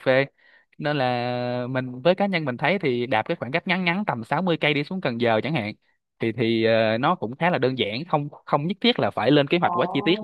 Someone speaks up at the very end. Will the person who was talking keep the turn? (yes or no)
no